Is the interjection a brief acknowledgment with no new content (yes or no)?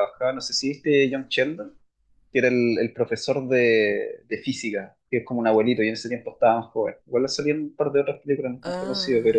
no